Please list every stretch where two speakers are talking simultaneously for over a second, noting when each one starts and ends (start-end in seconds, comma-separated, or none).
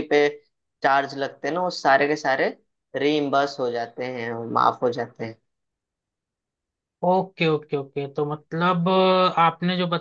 none